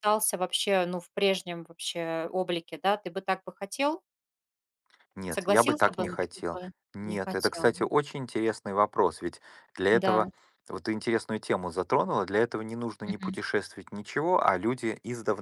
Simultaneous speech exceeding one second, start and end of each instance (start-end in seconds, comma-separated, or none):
5.3-7.8